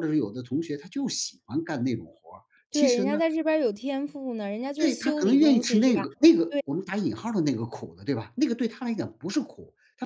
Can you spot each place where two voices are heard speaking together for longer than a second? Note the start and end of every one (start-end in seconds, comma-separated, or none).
4.8-6.0